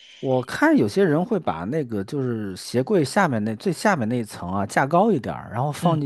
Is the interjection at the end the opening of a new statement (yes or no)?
no